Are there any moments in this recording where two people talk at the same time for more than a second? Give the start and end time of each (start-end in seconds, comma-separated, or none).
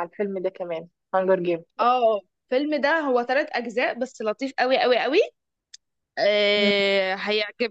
none